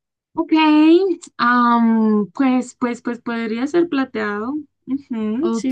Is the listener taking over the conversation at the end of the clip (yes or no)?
yes